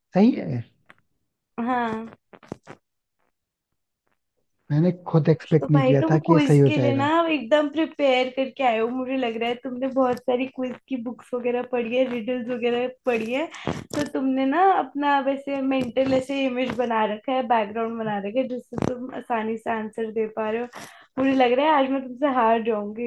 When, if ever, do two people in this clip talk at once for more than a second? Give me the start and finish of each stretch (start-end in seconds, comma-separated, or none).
5.4-7.1